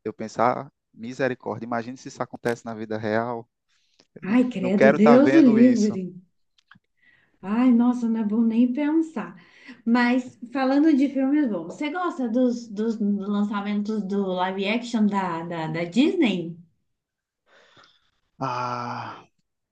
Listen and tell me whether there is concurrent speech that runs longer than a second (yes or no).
yes